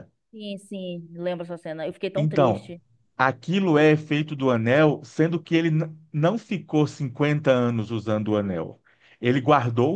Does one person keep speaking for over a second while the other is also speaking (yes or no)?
no